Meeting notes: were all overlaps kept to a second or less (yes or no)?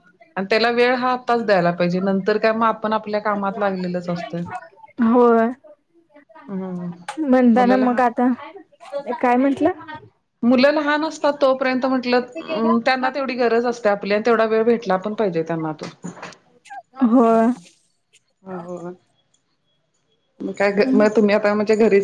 yes